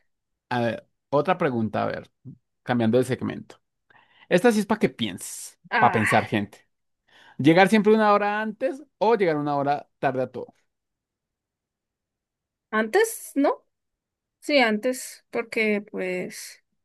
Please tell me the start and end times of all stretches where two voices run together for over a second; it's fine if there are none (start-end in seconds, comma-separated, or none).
none